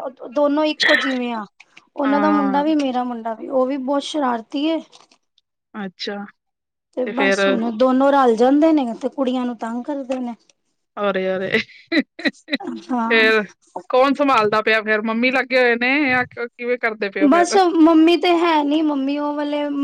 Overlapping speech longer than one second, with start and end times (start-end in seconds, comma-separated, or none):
none